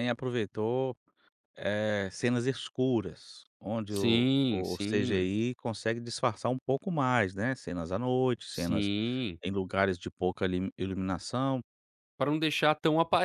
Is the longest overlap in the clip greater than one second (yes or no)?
yes